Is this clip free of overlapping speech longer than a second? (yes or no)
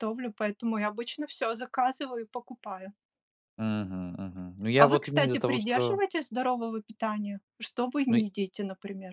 no